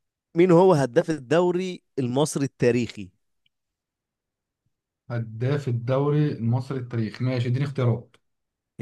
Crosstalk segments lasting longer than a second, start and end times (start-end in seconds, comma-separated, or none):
none